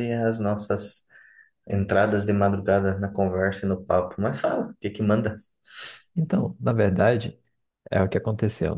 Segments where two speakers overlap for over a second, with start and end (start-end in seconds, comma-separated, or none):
none